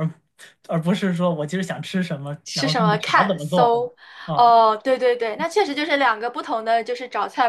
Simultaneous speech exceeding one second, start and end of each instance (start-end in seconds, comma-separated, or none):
2.5-3.7